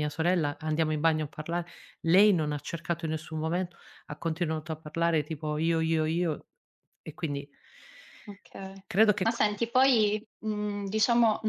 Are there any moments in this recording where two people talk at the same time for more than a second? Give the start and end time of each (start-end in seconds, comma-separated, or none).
none